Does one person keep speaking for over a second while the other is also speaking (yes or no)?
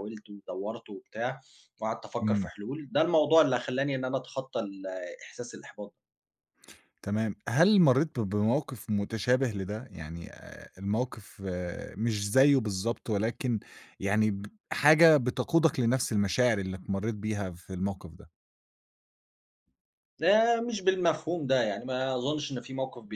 no